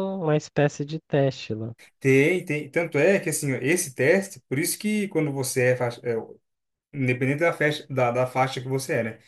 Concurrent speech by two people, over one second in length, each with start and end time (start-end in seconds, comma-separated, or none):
none